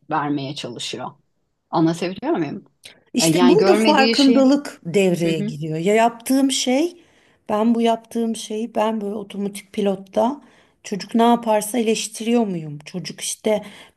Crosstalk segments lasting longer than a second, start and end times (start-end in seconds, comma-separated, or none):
3.2-4.5